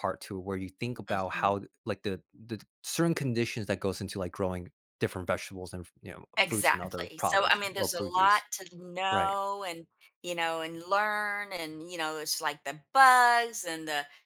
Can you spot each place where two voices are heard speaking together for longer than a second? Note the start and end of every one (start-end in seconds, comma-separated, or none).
6.4-8.4